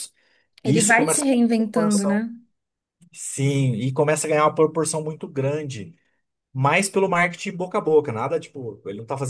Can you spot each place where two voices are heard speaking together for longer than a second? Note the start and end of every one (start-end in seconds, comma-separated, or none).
0.6-2.2